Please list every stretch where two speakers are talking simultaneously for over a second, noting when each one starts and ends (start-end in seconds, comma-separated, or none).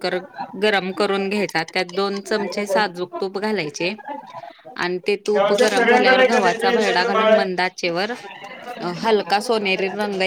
5.3-7.7